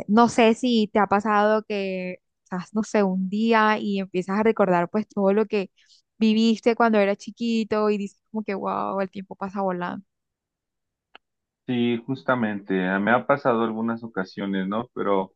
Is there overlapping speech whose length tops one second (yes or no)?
no